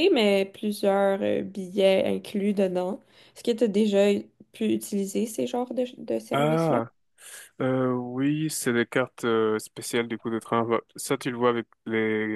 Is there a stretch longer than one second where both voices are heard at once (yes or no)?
no